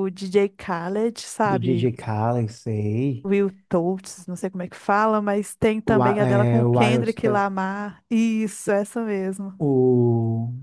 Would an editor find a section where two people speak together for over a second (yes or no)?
yes